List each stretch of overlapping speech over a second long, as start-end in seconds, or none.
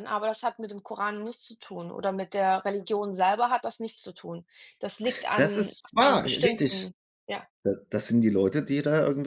5.3-6.8